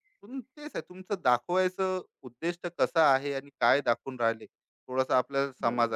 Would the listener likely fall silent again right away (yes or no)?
yes